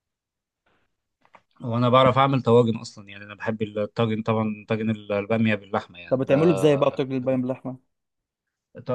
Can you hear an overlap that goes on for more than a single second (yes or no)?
no